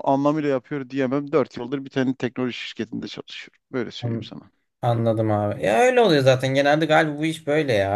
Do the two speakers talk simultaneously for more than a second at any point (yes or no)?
no